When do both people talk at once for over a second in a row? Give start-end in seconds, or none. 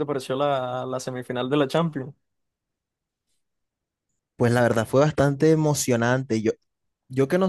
none